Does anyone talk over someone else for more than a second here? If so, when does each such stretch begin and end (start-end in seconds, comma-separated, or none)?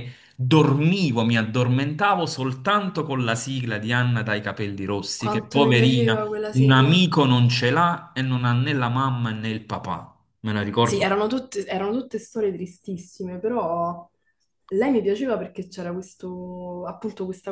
5.2-7.0